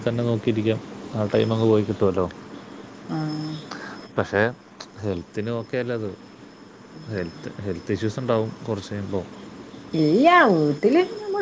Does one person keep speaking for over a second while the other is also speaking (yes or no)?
no